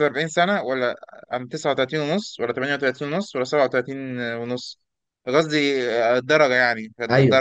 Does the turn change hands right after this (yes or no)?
yes